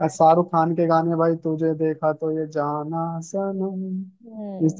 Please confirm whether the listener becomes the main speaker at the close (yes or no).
yes